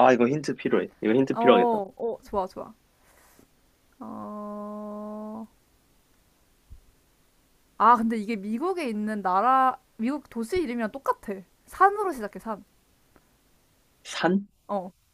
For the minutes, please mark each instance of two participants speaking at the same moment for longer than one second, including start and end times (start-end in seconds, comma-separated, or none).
none